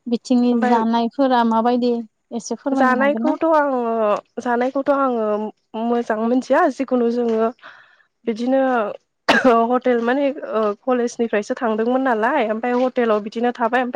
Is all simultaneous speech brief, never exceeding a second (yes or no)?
yes